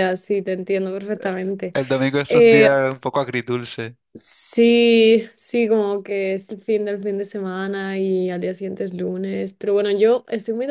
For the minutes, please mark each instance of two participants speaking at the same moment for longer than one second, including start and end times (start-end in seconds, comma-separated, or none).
none